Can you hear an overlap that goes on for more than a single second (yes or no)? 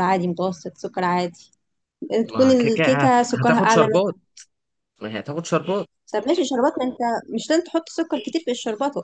yes